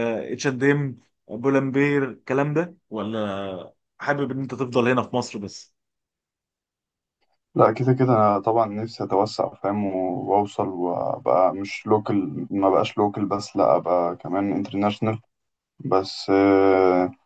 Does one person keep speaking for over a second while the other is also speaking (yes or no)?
no